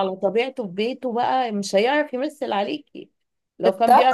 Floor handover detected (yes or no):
no